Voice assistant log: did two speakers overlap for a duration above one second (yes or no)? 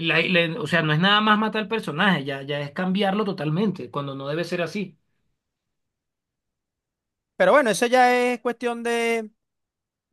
no